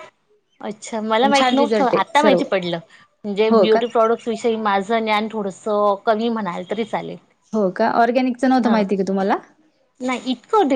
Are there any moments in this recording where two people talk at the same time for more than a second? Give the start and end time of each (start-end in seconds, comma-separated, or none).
1.2-2.4